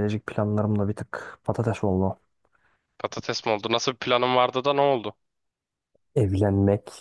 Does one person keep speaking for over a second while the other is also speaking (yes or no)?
no